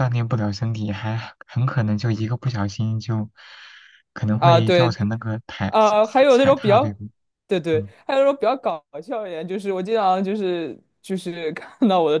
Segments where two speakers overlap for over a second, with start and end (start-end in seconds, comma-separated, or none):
5.7-7.0